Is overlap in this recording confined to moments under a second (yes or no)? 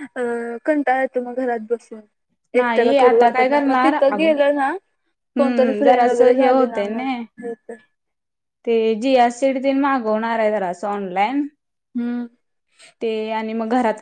no